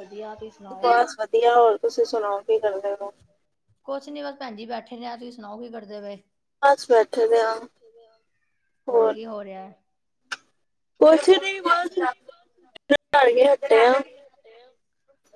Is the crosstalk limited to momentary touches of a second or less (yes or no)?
yes